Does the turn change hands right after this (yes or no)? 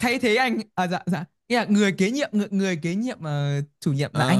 yes